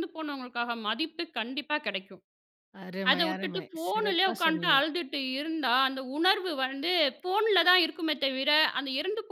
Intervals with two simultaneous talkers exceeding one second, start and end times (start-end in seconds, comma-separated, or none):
3.1-4.8